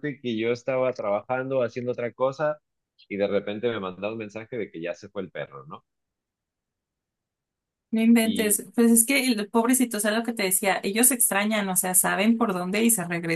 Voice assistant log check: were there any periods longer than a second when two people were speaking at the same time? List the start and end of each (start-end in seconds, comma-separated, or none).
none